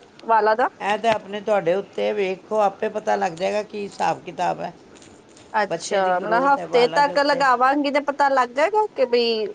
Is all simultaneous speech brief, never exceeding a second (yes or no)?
no